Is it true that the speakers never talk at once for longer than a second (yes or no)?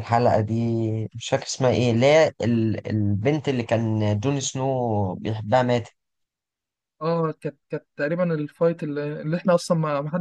yes